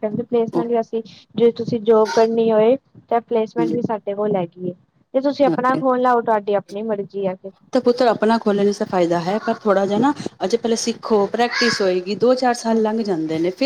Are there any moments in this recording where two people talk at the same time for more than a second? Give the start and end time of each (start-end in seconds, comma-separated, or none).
none